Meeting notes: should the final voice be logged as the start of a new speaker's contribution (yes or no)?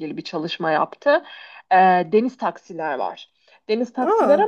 no